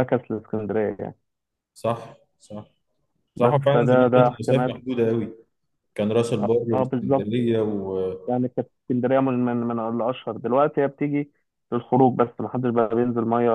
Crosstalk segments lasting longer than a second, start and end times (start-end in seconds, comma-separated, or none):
3.4-4.7